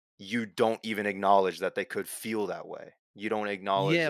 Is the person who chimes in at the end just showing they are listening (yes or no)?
no